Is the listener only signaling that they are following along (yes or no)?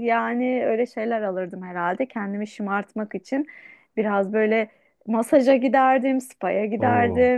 yes